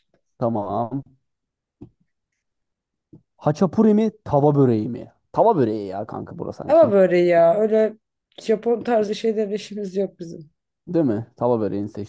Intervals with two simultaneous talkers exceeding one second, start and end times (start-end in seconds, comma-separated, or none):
none